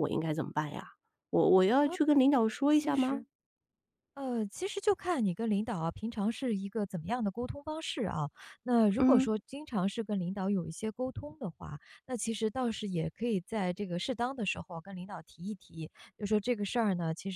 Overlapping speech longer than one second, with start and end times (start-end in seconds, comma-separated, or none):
none